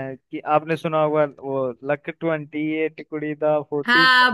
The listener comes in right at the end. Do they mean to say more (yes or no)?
yes